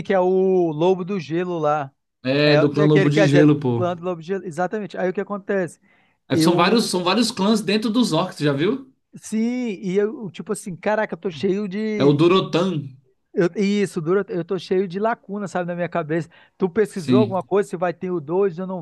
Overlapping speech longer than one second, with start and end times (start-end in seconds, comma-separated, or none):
2.4-3.8